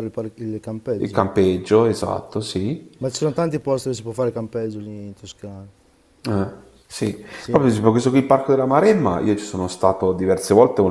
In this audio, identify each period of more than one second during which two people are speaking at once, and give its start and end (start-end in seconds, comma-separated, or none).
none